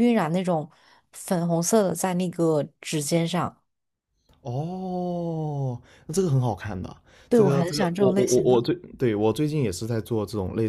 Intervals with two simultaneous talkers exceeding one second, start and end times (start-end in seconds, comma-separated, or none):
7.3-8.6